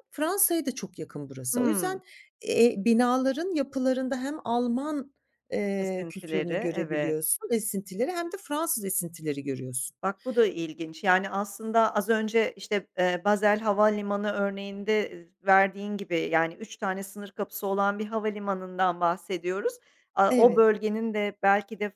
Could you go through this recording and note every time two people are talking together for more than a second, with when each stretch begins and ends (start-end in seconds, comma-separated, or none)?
5.8-7.2